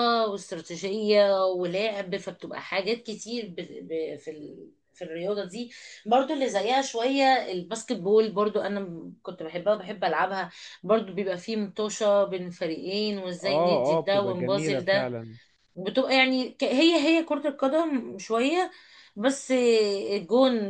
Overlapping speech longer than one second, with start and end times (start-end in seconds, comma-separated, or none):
13.4-15.1